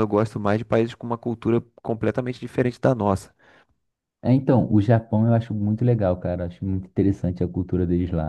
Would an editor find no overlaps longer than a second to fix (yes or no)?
yes